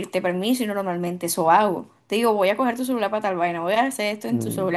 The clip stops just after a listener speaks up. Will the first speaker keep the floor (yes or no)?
no